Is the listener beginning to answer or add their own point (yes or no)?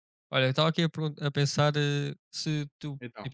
no